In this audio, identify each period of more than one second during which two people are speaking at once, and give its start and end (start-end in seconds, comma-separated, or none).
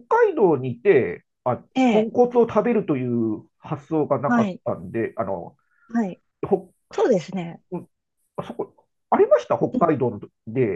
none